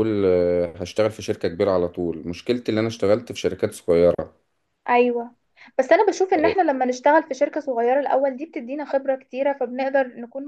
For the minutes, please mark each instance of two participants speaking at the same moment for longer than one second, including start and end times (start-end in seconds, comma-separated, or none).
none